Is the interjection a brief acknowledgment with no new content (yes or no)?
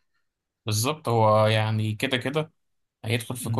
yes